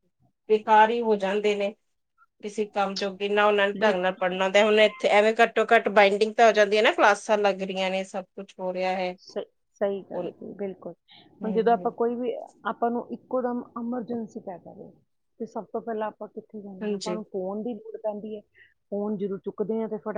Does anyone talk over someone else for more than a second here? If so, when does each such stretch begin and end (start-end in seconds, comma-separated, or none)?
none